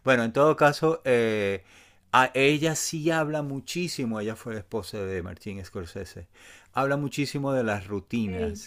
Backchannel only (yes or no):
yes